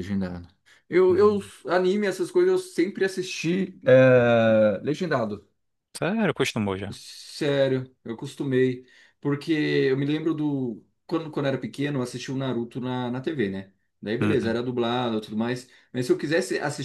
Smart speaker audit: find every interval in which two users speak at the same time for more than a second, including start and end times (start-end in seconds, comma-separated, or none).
none